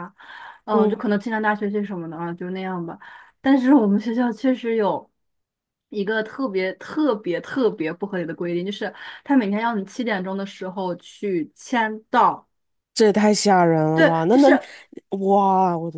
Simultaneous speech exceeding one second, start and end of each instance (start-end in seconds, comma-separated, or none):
none